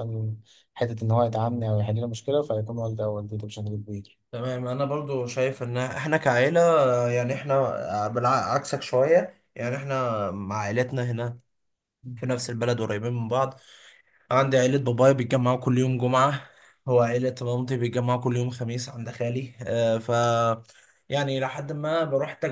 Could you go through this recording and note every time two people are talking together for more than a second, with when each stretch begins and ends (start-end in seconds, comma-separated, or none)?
none